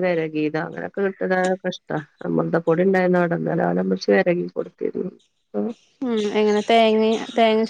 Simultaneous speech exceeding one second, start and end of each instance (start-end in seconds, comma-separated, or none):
none